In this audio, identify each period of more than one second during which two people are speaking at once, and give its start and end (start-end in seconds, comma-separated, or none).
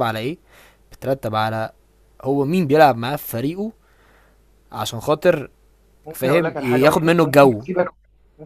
6.1-7.6